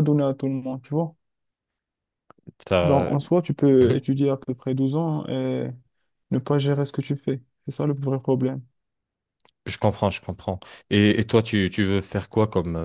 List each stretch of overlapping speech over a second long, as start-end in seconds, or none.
none